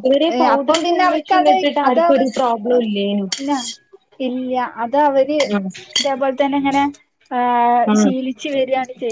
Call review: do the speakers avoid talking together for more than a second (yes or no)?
no